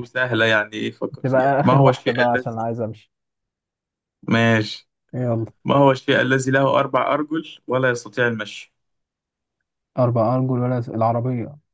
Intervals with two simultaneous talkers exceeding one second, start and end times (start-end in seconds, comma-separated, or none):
1.2-2.7